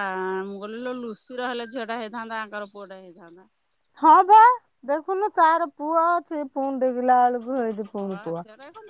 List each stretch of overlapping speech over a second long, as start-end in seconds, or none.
none